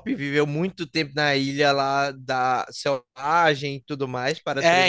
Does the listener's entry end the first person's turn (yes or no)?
yes